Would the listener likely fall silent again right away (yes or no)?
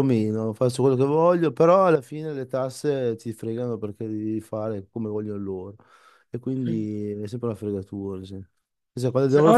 yes